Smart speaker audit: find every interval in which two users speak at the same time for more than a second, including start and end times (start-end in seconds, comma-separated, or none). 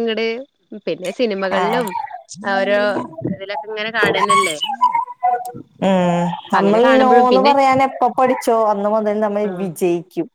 none